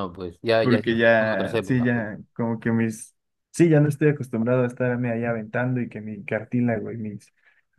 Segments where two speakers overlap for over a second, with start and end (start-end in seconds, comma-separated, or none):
0.6-2.1